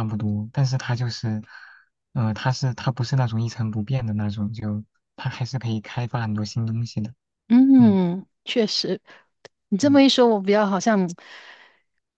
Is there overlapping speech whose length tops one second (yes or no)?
no